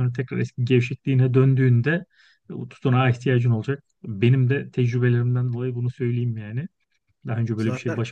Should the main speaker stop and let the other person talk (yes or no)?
no